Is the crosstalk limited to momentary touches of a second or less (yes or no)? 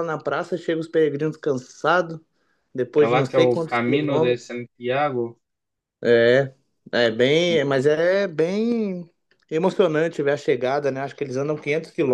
no